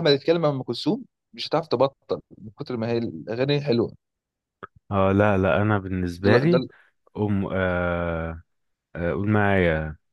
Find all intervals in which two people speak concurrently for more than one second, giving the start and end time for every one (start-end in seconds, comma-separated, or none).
none